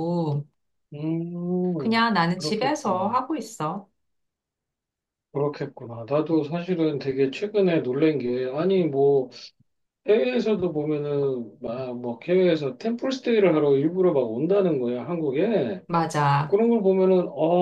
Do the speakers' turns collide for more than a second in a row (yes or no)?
yes